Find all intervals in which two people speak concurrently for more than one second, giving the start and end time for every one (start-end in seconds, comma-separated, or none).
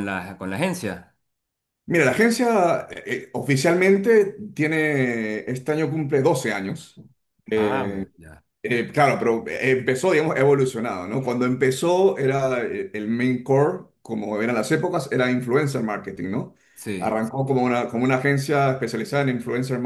none